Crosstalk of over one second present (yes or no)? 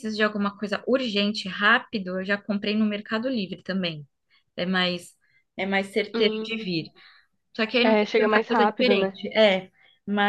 yes